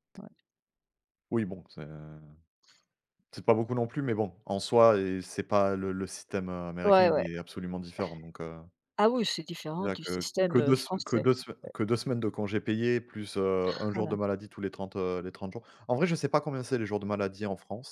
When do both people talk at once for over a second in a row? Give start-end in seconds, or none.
9.8-11.2